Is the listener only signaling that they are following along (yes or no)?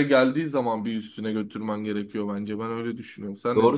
no